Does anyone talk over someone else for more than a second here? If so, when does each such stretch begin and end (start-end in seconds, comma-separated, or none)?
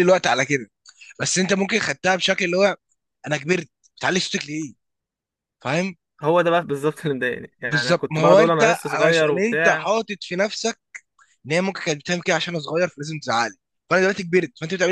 7.6-9.9